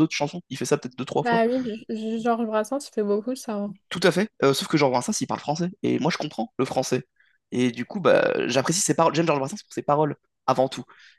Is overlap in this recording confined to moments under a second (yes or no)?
yes